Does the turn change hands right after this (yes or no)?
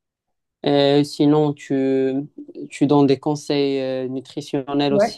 yes